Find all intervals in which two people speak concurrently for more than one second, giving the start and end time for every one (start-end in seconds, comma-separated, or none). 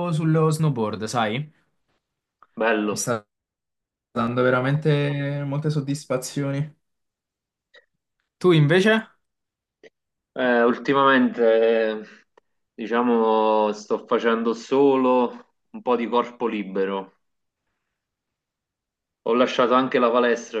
none